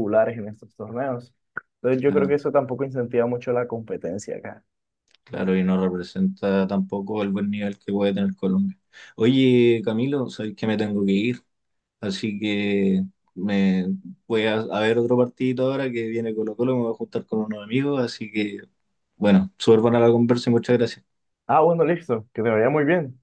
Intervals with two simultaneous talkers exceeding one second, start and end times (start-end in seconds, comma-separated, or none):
none